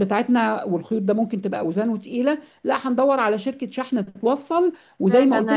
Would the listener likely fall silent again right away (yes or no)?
no